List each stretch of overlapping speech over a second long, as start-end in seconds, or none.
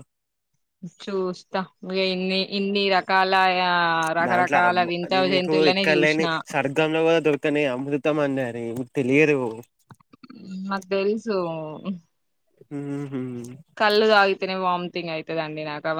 4.3-6.2